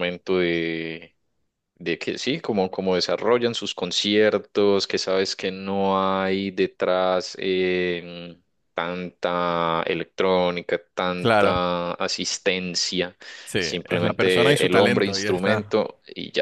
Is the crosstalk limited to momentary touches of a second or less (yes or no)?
no